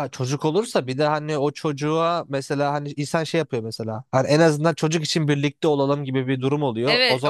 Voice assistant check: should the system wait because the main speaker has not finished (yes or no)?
no